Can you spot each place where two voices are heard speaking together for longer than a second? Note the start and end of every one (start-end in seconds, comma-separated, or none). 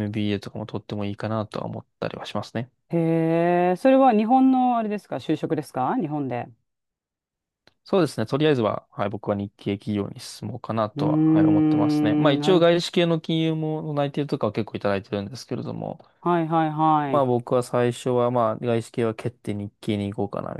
10.9-12.6